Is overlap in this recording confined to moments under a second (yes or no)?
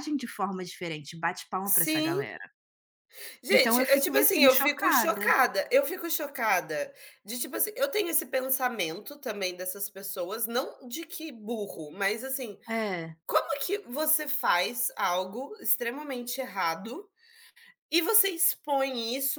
no